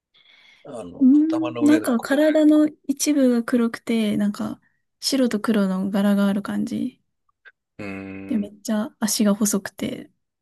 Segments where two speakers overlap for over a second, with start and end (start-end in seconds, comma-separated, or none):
1.0-2.2